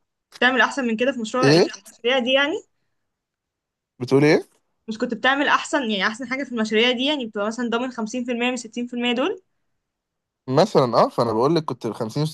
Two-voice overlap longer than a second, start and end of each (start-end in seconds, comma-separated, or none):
none